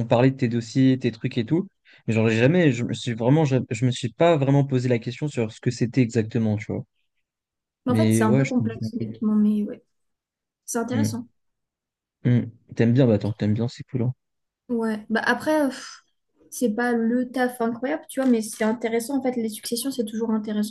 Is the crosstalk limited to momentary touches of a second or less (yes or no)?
no